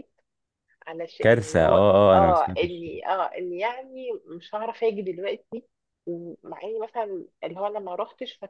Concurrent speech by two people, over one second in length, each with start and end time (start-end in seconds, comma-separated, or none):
1.2-2.9